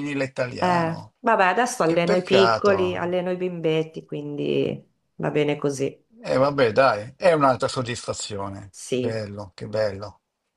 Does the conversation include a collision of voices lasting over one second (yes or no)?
yes